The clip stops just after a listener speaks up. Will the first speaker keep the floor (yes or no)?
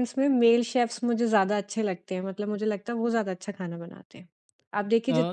yes